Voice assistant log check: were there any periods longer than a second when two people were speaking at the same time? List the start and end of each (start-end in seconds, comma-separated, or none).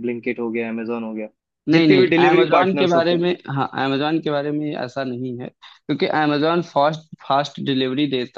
1.7-3.2